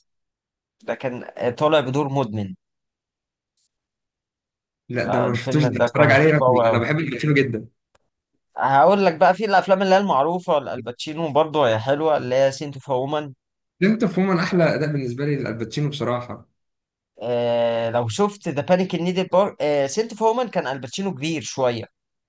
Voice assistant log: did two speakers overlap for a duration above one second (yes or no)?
yes